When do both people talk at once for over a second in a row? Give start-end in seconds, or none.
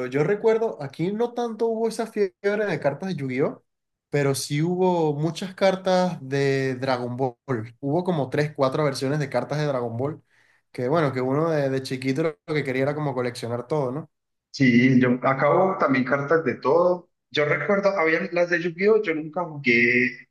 none